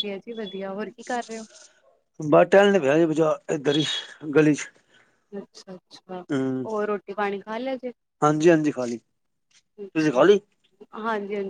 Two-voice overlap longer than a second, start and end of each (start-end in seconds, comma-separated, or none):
none